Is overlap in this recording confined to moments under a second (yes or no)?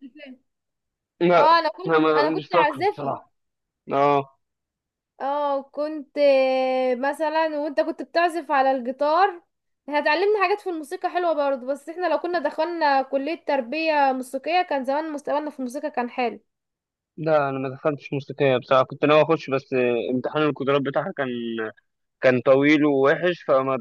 no